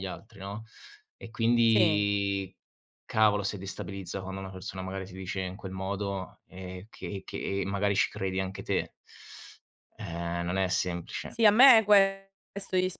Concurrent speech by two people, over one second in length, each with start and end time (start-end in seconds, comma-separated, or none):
none